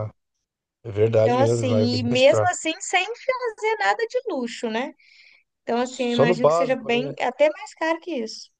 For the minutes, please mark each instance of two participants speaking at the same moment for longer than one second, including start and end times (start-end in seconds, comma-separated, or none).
1.1-2.5, 5.8-7.2